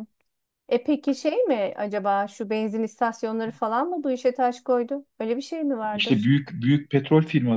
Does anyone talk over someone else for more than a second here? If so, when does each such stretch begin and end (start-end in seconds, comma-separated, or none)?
none